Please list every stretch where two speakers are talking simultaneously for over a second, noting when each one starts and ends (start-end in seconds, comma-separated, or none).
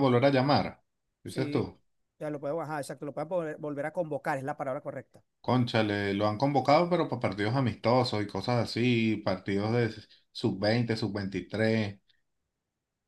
none